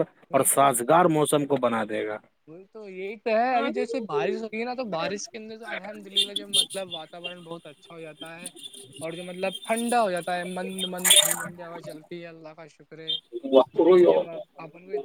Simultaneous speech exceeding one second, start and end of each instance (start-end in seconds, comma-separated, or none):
none